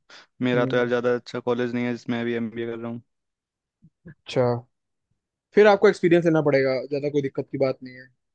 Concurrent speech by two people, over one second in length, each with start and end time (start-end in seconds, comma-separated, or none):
none